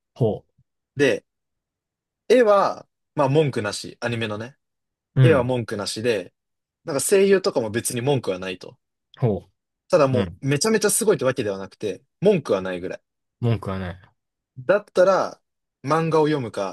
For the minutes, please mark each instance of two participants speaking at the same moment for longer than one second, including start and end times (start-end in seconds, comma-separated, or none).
none